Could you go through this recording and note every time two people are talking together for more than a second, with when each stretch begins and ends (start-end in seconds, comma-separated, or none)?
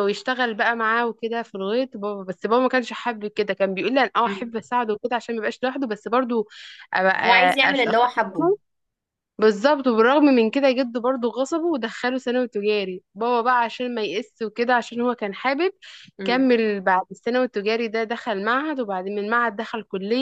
none